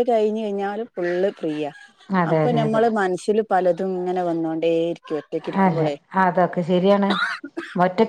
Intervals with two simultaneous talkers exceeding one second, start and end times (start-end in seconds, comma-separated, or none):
none